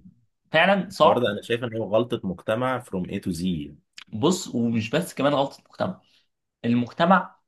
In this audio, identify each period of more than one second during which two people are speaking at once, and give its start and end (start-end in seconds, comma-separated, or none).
none